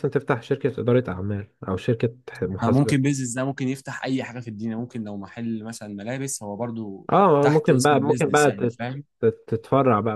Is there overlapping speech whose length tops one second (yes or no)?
yes